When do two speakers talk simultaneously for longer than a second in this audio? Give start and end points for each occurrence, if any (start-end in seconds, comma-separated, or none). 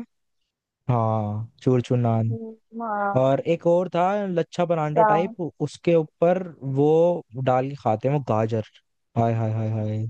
none